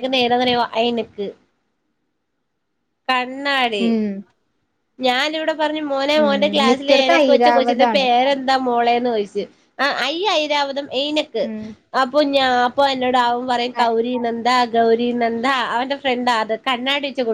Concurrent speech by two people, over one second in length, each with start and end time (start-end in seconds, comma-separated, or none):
6.2-8.1